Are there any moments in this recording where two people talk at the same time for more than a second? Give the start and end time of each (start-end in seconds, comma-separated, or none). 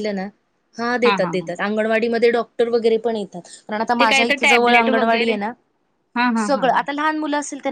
4.0-5.3